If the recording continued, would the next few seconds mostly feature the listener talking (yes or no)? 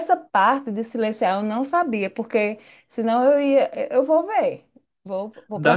yes